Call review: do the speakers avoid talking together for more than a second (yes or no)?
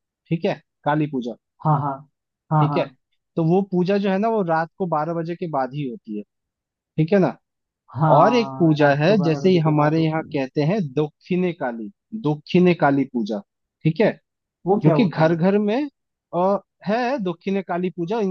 no